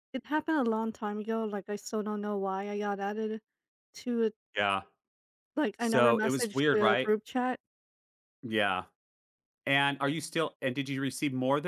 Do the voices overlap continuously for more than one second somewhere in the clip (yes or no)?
yes